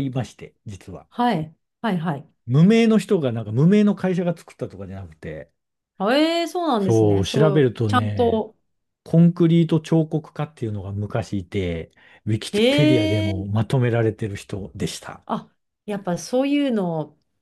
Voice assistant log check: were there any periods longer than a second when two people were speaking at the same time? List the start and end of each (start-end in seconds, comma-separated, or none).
6.8-8.4